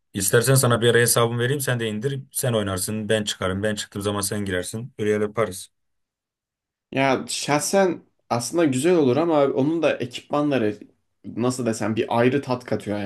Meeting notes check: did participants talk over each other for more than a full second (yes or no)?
no